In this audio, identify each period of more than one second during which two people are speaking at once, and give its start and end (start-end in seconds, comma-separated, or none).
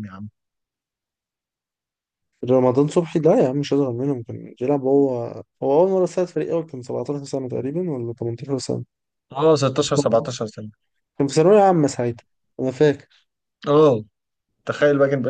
none